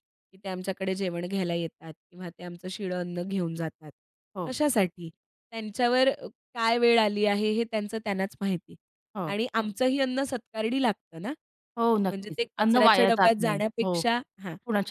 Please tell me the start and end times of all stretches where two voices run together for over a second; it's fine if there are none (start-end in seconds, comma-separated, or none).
12.1-14.0